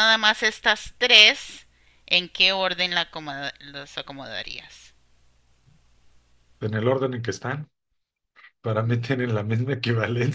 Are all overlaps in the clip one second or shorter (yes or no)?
yes